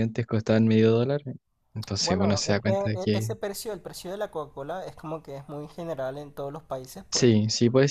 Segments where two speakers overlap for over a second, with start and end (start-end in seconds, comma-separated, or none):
2.0-3.3